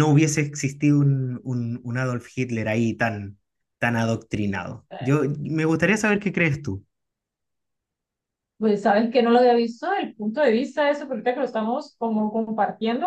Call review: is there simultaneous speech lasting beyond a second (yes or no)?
no